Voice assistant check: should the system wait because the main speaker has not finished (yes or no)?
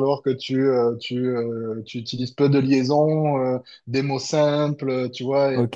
no